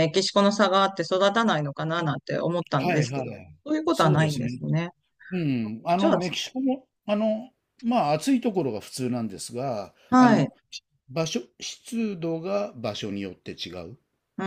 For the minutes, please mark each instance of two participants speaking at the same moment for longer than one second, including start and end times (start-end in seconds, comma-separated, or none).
2.8-4.6